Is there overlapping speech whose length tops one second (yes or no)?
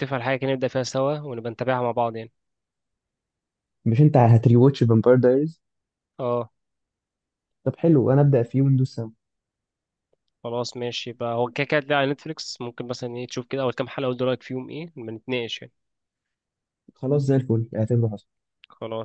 no